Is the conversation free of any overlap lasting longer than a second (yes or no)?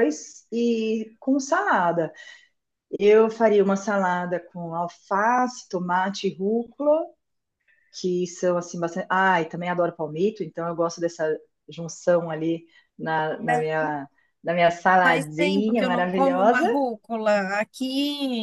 no